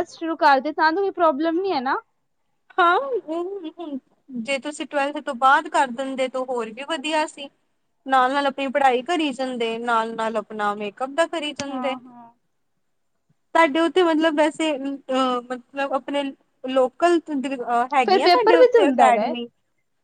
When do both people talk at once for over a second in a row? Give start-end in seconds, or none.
18.1-19.3